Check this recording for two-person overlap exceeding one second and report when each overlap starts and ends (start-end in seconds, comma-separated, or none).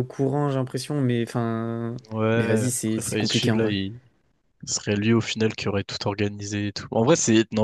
2.4-3.8